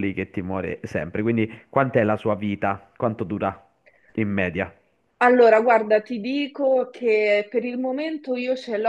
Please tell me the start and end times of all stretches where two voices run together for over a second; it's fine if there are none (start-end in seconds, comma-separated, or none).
none